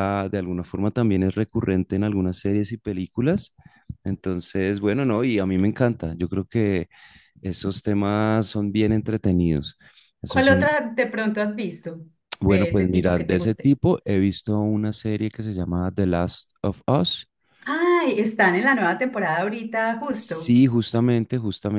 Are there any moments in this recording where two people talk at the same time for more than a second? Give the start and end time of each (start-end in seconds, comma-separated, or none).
12.4-13.7